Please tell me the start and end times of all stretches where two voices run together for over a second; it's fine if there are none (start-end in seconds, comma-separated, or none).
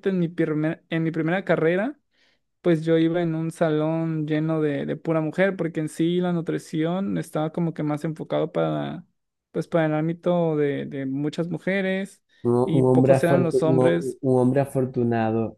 12.7-14.2